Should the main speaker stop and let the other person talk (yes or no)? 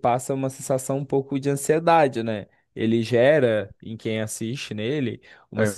no